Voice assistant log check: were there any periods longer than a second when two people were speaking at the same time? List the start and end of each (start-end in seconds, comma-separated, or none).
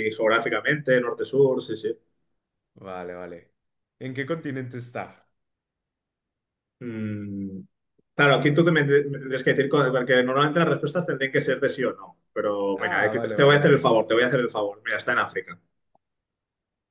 12.8-14.0